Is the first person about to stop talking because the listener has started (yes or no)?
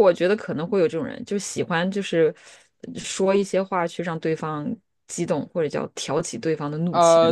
yes